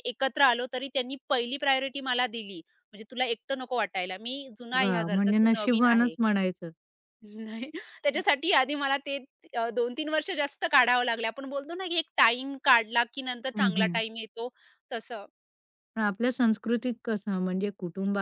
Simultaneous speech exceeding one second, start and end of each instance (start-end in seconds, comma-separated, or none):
4.8-6.1